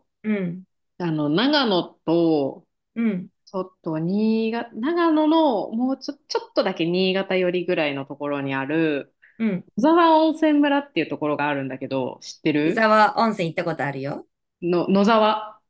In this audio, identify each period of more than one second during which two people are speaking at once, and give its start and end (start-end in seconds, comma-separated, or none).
none